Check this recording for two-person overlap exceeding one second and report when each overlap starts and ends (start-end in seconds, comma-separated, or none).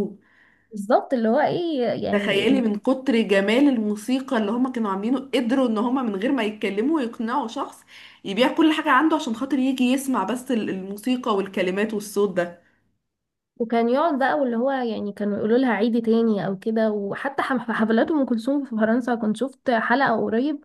none